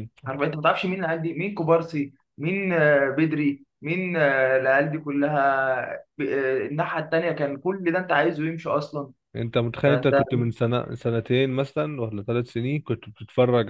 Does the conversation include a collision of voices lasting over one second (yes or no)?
no